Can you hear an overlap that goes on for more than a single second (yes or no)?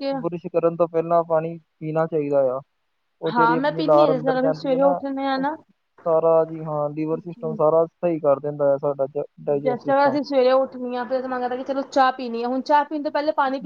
yes